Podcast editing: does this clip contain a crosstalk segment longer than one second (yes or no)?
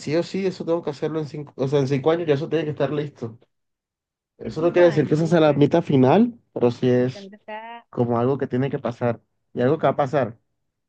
yes